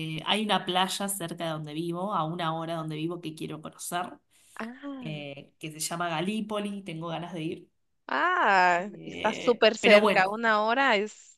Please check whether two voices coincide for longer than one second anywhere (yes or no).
yes